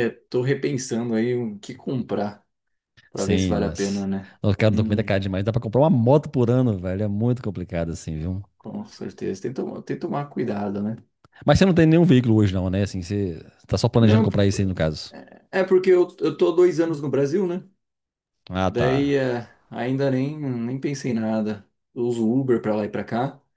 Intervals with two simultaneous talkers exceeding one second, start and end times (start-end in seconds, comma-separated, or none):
3.1-5.0